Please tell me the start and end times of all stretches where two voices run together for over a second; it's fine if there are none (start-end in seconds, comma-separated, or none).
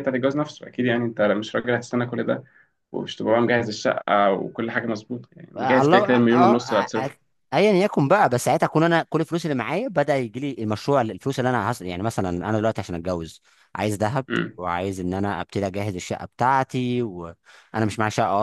5.6-7.1